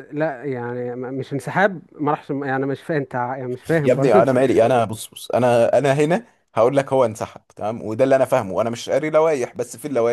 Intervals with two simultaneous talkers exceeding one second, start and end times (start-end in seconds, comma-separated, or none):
none